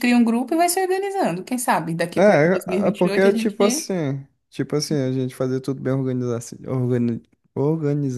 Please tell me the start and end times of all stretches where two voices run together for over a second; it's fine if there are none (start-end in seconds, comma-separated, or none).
2.2-3.9